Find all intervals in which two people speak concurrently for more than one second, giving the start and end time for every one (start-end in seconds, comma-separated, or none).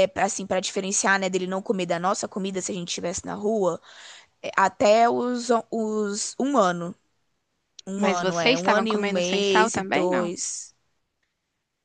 8.0-10.3